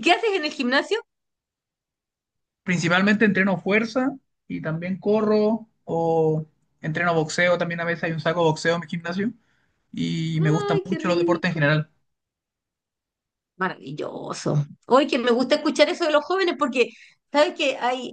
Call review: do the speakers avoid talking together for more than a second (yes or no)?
no